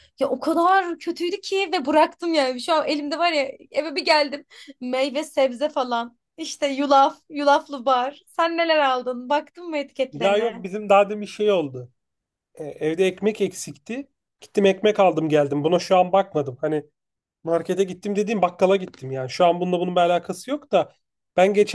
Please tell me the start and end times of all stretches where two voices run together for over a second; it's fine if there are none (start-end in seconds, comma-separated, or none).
none